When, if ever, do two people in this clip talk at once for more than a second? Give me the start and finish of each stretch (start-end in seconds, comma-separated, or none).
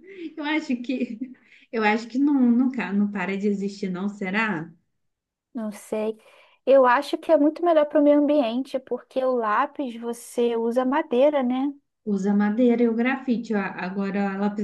none